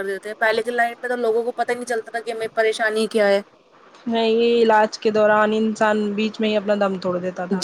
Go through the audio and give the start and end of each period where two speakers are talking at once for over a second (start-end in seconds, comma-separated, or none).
none